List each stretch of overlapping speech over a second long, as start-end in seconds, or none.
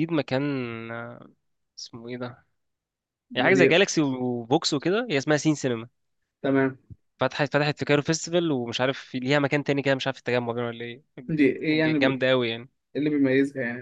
none